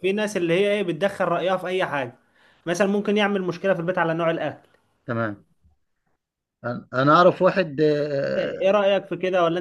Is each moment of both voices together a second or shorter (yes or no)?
yes